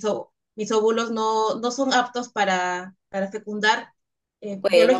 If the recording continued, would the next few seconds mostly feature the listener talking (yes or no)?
no